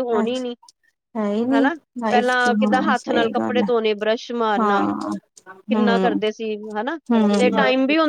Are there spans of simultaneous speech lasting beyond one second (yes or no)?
yes